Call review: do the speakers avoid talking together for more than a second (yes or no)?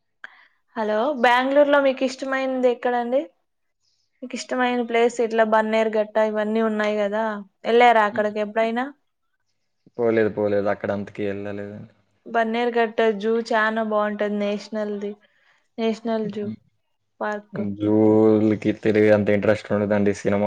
yes